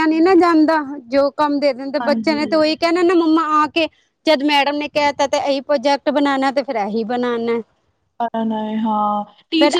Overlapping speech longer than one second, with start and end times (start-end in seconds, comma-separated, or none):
none